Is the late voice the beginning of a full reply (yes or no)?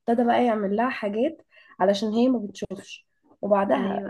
no